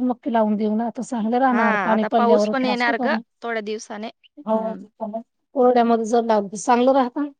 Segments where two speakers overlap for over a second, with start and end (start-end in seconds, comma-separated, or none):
1.5-3.1